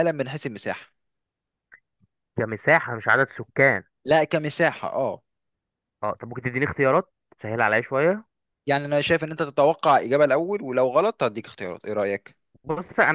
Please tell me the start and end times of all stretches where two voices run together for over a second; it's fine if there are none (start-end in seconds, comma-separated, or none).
none